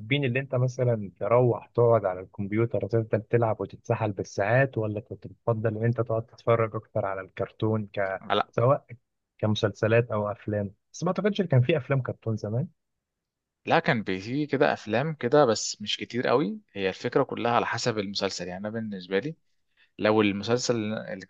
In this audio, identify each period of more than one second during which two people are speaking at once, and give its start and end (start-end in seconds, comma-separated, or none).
none